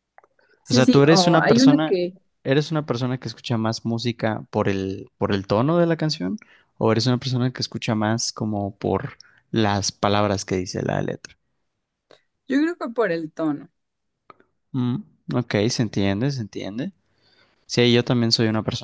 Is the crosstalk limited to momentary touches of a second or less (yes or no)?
no